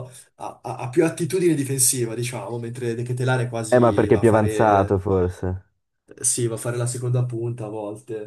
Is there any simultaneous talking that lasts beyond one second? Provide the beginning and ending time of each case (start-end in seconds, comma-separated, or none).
3.7-5.0